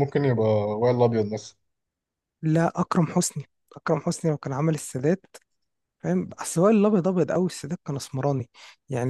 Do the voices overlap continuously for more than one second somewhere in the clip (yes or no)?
no